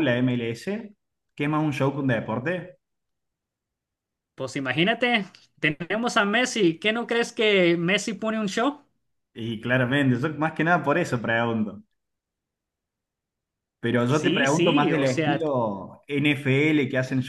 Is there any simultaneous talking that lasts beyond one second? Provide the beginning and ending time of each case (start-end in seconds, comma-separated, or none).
14.1-15.5